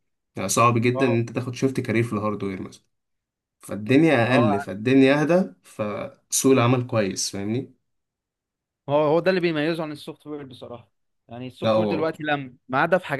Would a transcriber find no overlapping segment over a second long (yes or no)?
yes